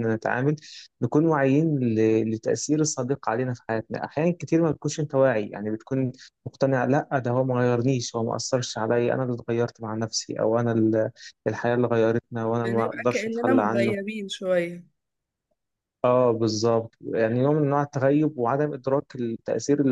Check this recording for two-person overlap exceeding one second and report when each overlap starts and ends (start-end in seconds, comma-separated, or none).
12.6-13.9